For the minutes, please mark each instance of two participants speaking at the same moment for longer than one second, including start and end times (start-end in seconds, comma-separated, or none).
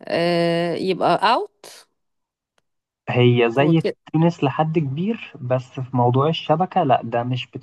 none